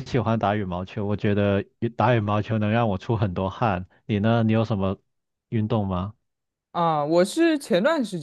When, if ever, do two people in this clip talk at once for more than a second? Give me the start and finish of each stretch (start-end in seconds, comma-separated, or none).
none